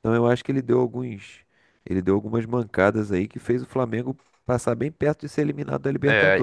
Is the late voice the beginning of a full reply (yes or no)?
yes